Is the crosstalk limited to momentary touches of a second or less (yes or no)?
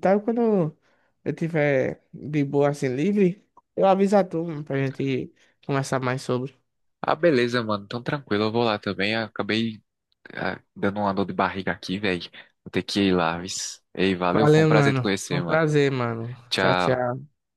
no